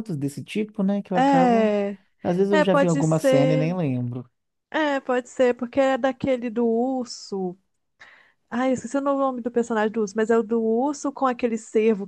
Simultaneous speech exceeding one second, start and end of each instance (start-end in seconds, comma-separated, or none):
2.5-3.7